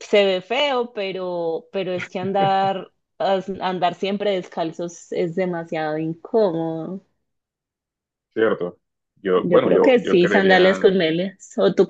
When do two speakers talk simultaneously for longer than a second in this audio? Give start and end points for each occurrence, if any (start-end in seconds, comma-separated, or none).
9.3-10.8